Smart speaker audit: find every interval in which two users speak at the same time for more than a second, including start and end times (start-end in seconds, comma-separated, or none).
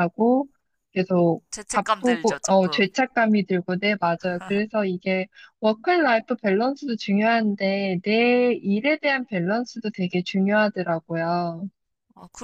1.5-2.9